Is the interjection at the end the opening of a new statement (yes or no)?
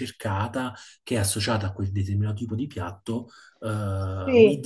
no